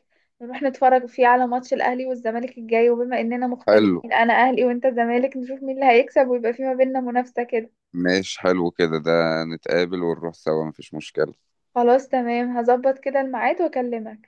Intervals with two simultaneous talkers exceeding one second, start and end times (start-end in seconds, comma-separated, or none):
none